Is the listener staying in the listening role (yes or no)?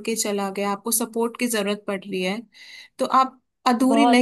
yes